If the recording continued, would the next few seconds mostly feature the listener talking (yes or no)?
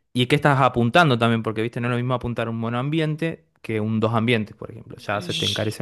yes